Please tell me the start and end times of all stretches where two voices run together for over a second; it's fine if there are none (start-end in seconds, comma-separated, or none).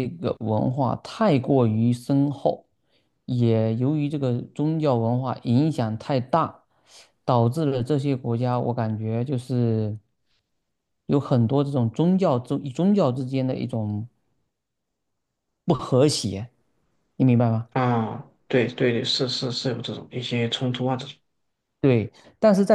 none